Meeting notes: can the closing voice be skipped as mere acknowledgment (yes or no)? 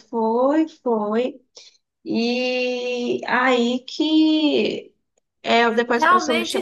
no